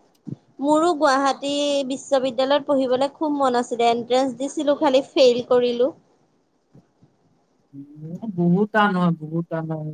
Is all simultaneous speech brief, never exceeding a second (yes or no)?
yes